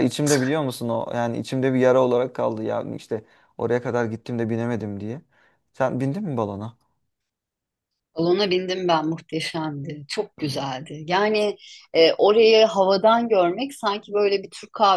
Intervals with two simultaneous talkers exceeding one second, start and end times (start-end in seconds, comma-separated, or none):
none